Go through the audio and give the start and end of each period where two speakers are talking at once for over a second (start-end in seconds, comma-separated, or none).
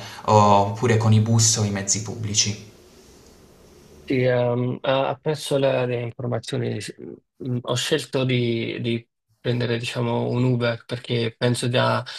none